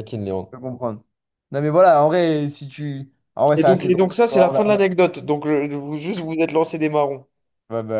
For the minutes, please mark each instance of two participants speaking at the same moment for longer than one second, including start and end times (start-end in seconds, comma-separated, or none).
3.6-4.8